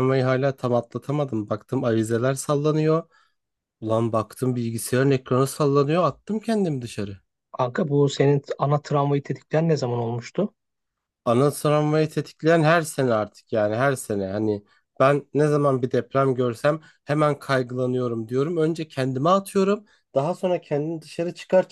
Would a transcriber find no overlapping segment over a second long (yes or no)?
yes